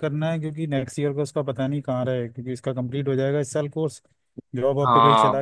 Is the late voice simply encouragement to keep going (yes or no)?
yes